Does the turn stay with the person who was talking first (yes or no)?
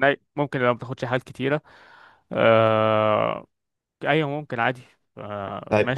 no